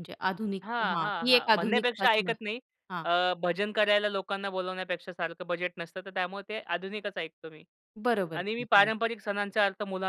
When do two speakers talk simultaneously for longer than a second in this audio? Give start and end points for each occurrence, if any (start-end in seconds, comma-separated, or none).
0.6-2.4